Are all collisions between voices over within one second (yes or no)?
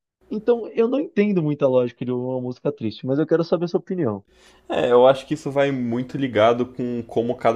yes